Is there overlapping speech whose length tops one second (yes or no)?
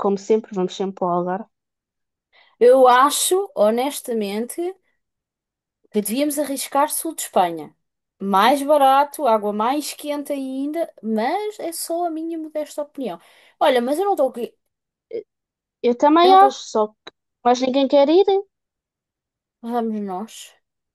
no